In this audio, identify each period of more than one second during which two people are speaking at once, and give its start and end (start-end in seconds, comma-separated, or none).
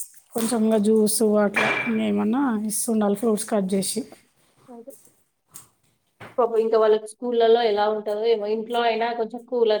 none